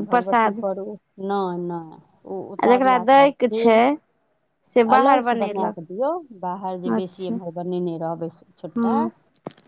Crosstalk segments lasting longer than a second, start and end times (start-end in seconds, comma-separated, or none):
none